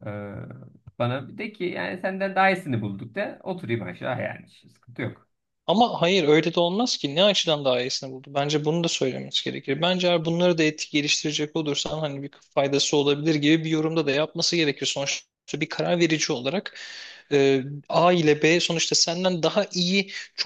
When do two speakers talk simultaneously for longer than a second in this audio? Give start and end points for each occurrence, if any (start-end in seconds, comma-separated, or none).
none